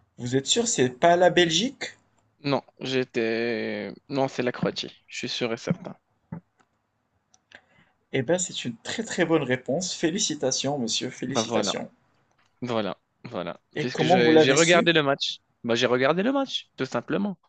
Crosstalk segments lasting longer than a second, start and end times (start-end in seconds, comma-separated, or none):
13.7-14.9